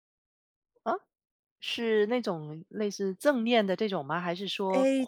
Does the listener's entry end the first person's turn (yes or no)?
yes